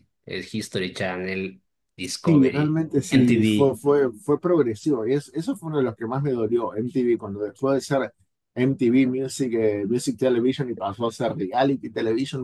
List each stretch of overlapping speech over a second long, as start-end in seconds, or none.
2.2-3.8